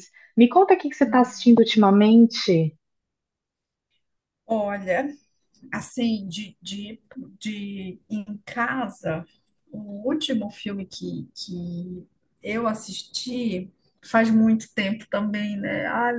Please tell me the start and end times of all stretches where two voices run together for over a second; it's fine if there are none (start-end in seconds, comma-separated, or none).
none